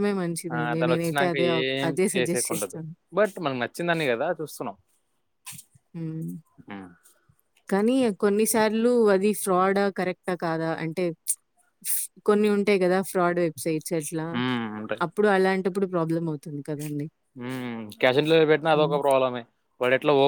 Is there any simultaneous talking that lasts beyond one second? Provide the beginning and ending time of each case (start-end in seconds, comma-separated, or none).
0.6-2.8